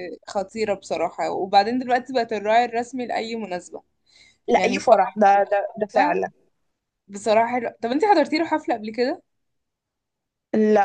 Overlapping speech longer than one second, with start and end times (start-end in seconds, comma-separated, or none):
none